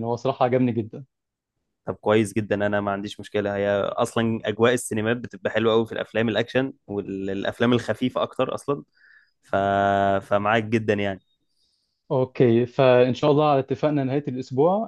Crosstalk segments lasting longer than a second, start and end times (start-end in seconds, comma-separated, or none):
none